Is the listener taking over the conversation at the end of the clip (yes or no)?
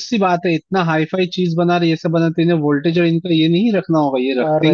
no